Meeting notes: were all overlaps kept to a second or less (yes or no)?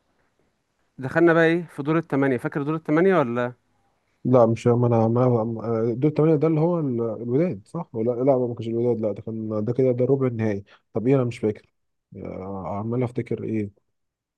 yes